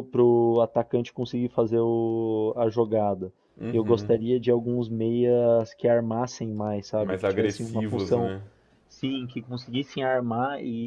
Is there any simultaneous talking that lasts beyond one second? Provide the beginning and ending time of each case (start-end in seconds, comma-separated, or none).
7.0-8.3